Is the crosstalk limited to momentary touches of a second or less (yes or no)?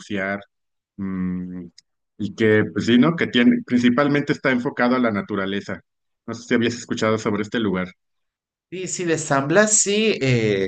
yes